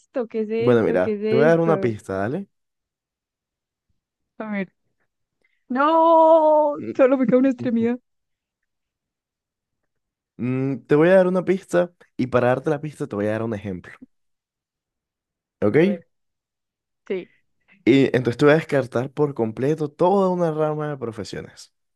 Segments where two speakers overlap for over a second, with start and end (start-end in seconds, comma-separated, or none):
0.6-2.0